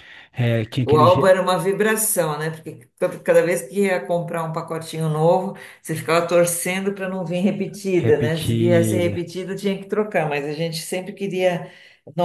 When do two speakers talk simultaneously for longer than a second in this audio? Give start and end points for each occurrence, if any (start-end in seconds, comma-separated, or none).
8.0-9.2